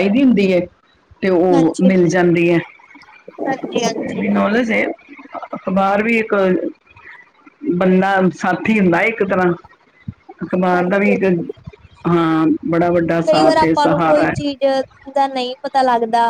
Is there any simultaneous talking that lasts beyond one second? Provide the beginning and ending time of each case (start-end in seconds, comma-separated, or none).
13.3-14.6